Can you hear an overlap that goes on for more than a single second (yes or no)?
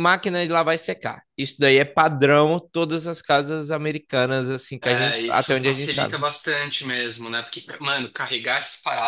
yes